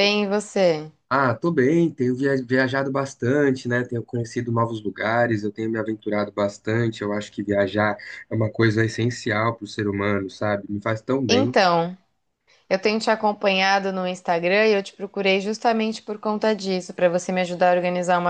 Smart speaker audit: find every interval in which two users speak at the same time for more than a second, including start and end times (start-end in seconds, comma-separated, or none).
none